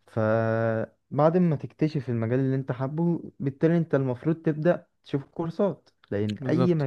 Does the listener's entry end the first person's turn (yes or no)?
no